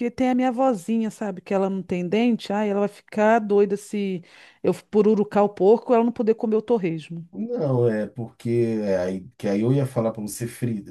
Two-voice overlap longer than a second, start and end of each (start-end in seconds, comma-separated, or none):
none